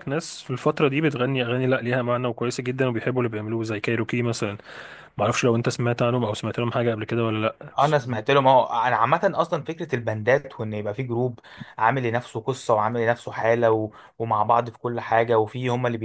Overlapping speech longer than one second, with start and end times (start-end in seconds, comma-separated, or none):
none